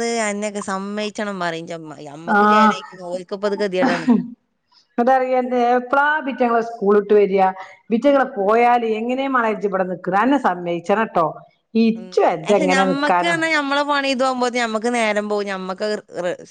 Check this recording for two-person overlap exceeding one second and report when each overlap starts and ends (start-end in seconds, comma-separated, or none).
none